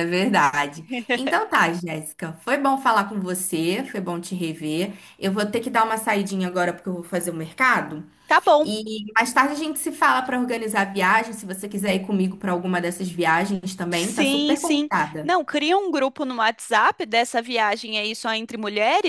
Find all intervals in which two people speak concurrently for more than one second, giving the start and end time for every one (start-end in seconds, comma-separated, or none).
13.9-15.3